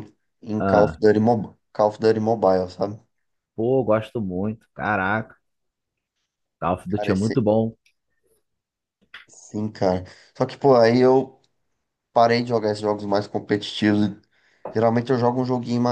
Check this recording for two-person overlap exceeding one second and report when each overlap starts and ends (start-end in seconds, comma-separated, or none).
none